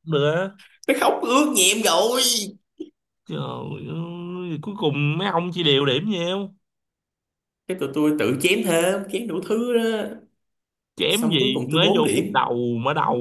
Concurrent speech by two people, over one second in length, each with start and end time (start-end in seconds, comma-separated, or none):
11.1-12.5